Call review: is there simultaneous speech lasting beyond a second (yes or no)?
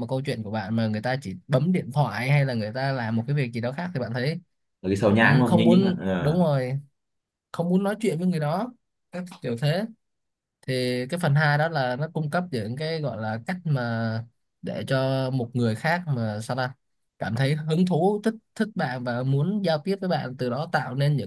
yes